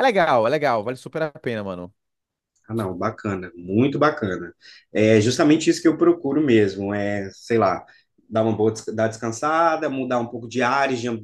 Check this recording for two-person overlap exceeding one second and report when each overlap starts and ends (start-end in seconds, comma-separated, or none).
none